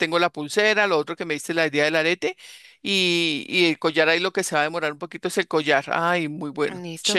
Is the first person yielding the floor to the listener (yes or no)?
yes